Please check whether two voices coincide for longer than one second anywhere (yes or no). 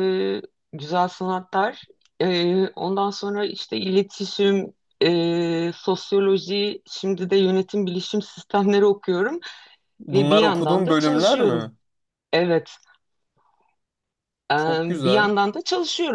yes